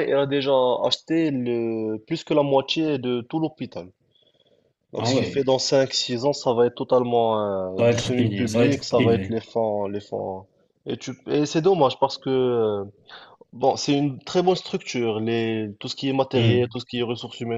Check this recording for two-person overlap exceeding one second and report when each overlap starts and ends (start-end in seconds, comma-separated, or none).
7.8-9.4